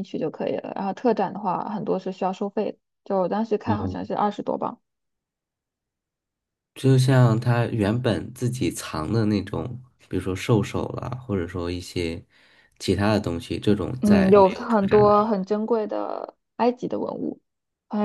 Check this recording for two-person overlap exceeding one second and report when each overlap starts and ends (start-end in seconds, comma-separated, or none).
14.0-15.3